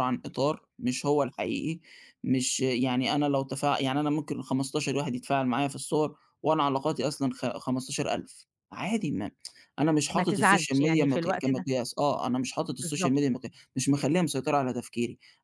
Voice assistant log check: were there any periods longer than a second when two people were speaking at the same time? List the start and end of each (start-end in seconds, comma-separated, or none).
10.1-11.7